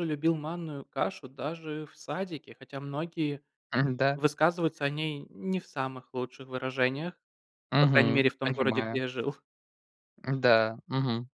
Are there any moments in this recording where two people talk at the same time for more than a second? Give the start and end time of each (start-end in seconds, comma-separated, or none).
7.8-9.0